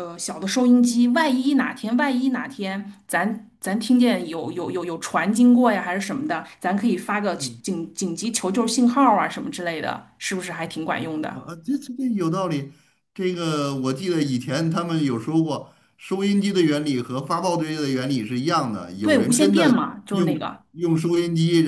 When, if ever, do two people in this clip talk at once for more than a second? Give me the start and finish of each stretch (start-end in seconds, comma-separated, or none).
19.0-20.6